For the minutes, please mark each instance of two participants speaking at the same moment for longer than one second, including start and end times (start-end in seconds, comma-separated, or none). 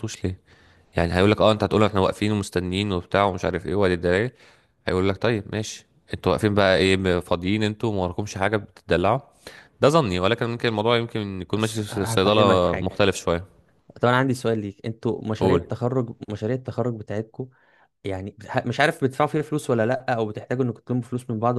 11.6-12.9